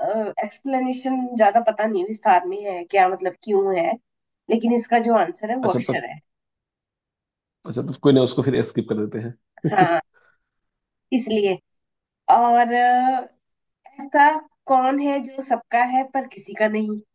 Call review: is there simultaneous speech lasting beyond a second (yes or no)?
no